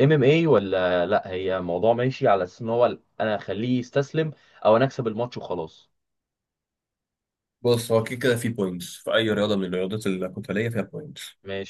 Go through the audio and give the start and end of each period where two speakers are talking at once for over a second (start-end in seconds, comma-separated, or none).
none